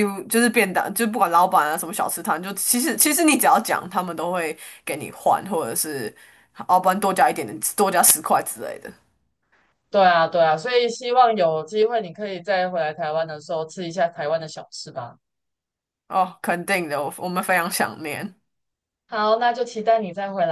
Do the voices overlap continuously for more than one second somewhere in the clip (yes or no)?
no